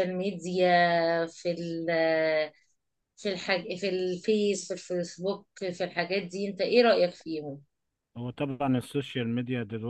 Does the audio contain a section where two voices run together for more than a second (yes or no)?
no